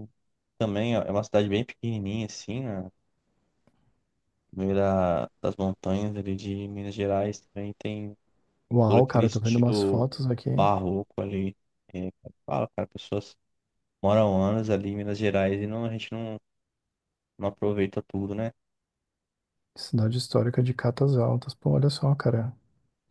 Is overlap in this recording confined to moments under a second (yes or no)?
no